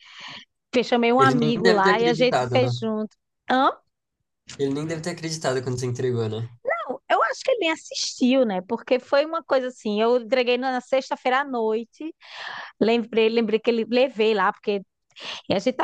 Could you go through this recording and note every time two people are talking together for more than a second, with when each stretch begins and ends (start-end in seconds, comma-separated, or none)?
1.2-2.7